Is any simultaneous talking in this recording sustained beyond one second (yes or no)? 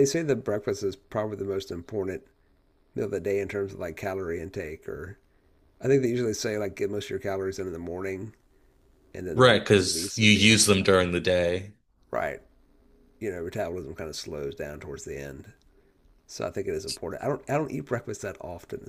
yes